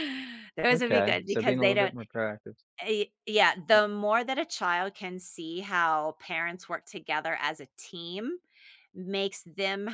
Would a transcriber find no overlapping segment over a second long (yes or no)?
no